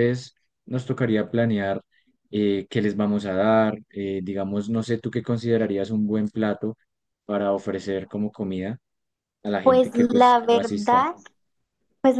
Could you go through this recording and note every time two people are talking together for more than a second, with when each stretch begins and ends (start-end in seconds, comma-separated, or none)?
9.6-11.1